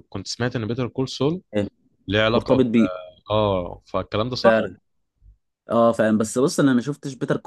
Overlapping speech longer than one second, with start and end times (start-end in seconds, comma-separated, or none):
none